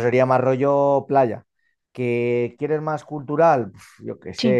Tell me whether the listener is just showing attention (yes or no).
yes